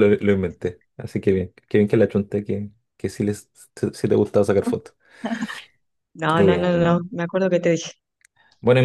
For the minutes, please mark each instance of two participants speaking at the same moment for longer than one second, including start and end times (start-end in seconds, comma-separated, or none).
none